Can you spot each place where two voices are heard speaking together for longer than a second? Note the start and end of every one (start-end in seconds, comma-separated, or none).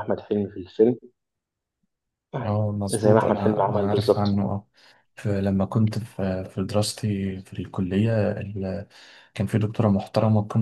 2.9-4.4